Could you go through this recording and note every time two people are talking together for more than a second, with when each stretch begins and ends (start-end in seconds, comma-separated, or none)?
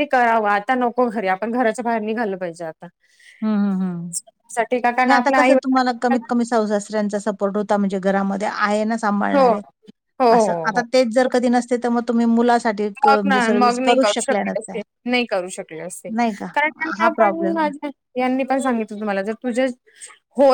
13.1-14.8